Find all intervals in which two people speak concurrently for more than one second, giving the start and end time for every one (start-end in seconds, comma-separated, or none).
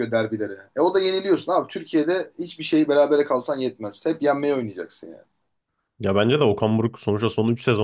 none